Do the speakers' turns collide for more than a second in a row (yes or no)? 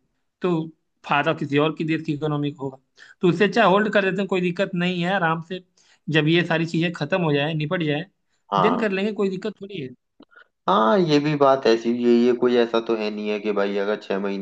no